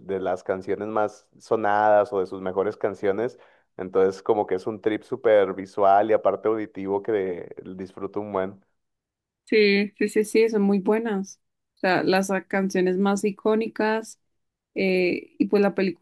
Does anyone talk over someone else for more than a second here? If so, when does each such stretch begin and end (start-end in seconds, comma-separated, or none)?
none